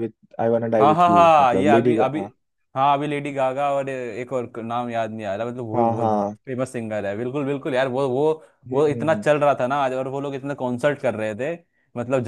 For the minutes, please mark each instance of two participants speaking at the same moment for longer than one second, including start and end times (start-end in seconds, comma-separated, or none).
0.8-2.2